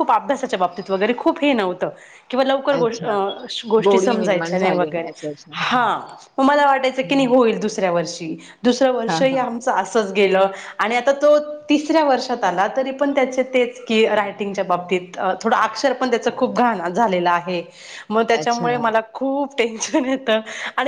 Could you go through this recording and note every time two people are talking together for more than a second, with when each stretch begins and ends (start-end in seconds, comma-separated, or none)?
3.8-5.1